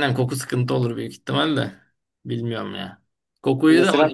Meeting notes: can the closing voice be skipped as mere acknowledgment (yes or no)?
yes